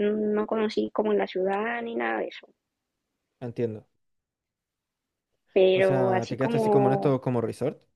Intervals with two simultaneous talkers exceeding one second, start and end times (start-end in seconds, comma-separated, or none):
5.7-7.2